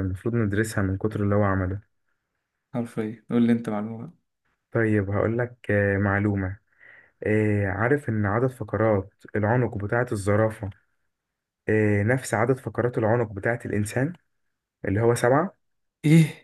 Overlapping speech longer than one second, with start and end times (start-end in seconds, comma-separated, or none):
none